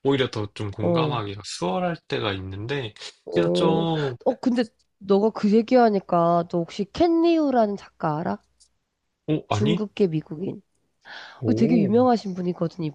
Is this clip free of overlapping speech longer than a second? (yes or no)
yes